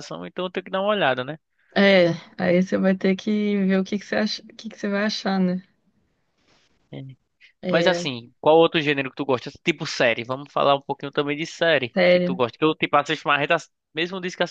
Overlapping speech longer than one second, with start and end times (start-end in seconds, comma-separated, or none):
none